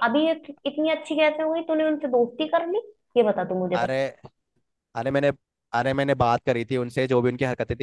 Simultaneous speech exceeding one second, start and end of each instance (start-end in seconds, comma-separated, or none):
none